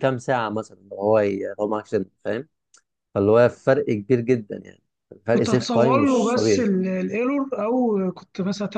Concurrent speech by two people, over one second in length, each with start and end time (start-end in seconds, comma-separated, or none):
5.3-6.7